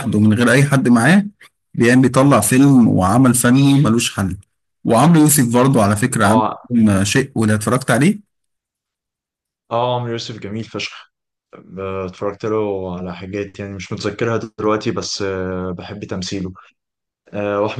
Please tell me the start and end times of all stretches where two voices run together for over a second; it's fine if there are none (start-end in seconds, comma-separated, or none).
none